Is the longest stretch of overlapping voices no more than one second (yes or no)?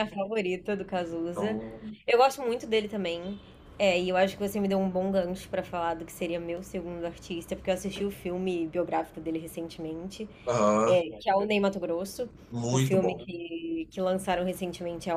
yes